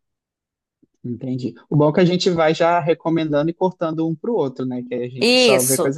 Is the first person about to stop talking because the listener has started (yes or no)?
yes